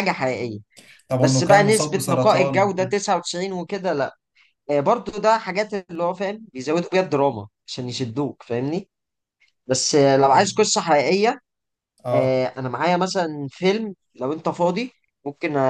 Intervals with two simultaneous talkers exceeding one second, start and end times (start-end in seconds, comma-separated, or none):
1.2-3.0